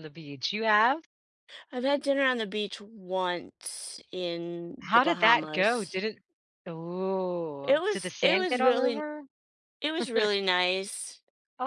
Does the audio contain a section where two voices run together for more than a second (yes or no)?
yes